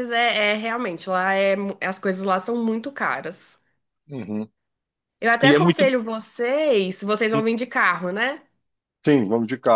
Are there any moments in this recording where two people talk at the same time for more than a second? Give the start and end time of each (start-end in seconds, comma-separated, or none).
none